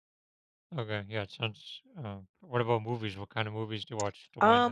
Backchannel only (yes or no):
no